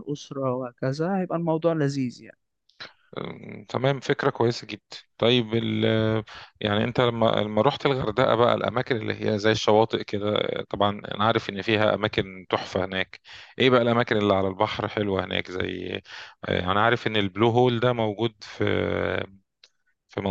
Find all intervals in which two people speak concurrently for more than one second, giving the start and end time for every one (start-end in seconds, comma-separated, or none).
none